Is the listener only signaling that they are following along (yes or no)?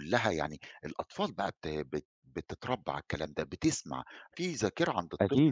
no